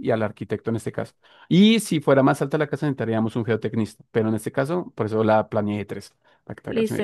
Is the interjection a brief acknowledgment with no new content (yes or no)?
no